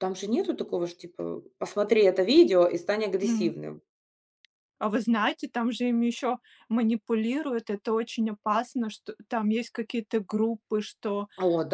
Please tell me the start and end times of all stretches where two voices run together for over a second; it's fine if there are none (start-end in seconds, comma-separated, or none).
none